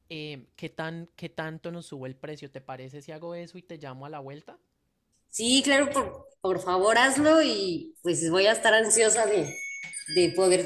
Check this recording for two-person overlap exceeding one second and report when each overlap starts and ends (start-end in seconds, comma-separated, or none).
none